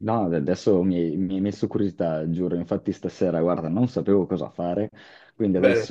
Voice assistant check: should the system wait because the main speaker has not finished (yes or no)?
yes